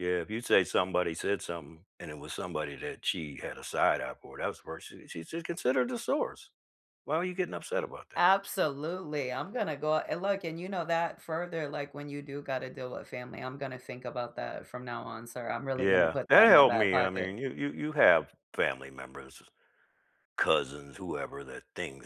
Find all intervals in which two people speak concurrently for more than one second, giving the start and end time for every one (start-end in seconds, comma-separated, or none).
15.8-17.3